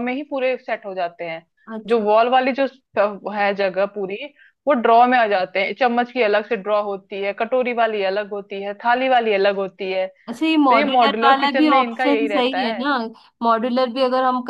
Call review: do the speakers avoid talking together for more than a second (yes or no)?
no